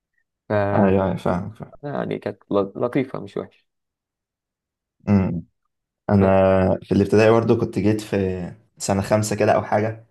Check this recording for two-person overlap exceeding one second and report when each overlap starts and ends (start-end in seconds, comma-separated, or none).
none